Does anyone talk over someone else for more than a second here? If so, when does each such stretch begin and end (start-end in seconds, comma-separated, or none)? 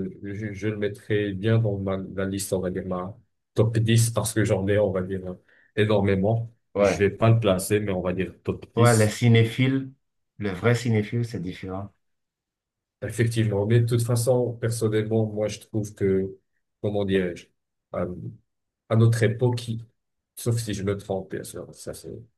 none